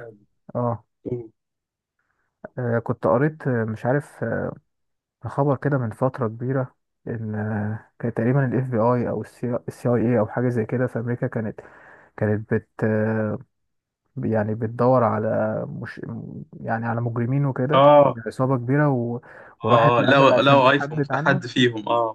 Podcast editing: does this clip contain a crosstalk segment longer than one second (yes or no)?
yes